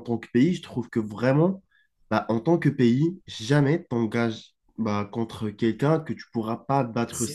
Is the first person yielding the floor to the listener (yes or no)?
yes